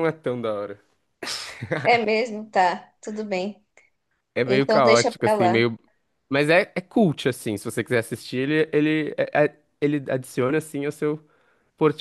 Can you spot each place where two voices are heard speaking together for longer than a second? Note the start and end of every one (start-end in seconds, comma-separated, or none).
4.5-5.7